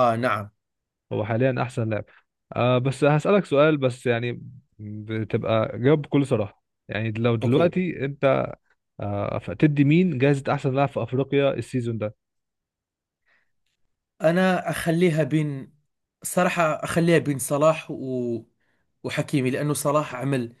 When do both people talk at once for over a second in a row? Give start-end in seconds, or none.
none